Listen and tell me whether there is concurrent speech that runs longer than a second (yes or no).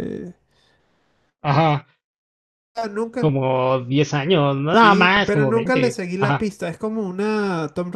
yes